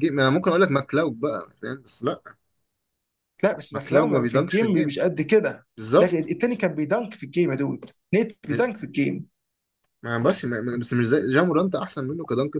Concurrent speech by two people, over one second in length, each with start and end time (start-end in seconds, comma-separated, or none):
3.7-5.0